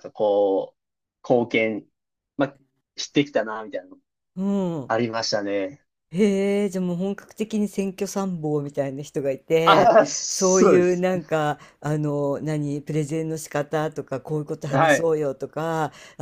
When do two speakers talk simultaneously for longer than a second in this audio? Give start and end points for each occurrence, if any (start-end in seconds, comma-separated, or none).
9.7-11.1